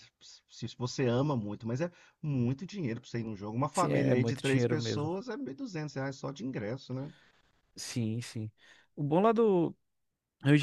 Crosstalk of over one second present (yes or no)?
yes